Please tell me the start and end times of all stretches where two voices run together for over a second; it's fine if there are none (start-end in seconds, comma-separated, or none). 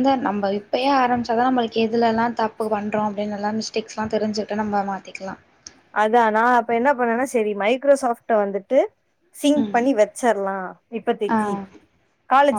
none